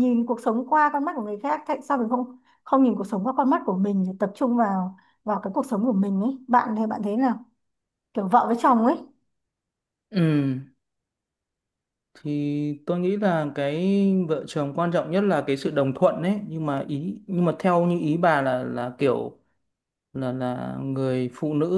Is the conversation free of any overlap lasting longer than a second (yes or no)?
yes